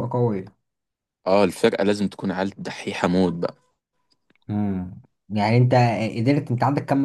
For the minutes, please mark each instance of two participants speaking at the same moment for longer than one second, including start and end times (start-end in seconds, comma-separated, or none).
none